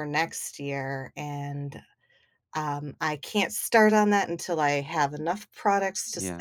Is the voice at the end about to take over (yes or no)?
no